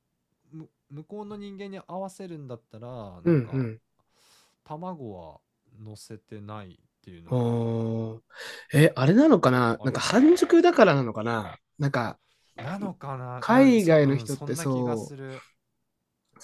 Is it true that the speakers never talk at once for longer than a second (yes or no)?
no